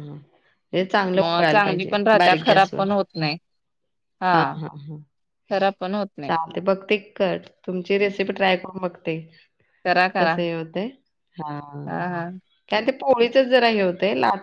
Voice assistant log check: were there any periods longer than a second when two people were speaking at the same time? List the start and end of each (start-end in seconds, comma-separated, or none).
1.2-2.8